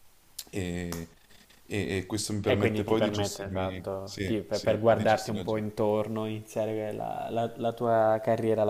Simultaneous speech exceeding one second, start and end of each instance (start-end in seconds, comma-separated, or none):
2.5-5.7